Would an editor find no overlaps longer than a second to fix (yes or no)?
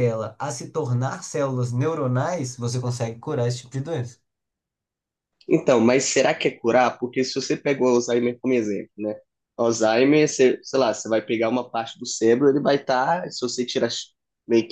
yes